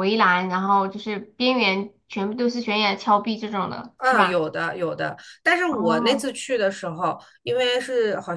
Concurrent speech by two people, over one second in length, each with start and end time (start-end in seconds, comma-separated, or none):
none